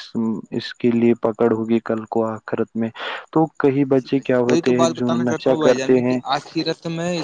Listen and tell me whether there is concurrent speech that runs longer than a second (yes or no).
yes